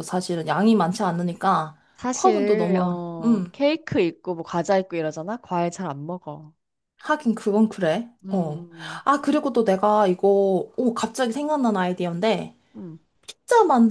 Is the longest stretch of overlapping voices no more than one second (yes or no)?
no